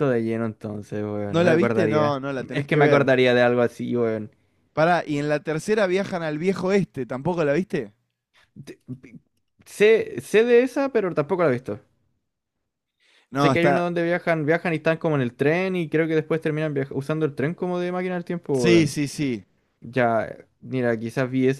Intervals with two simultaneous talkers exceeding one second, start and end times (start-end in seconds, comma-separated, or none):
1.3-3.1